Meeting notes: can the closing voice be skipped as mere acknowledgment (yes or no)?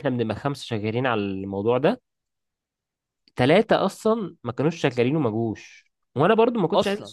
yes